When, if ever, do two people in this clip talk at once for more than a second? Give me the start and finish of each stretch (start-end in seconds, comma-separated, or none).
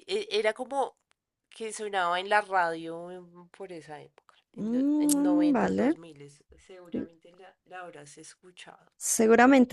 4.6-6.0